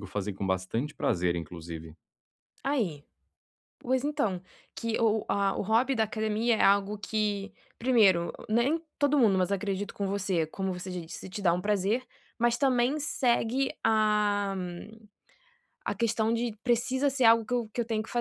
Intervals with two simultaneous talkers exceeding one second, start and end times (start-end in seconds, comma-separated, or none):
none